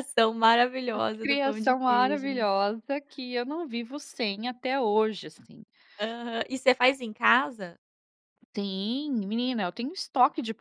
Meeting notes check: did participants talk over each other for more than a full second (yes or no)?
yes